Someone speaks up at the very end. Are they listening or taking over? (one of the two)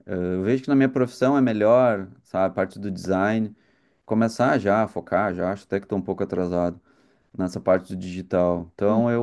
listening